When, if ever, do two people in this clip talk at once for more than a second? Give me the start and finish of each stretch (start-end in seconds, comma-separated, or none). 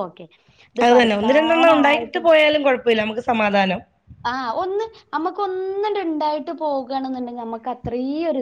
0.8-2.2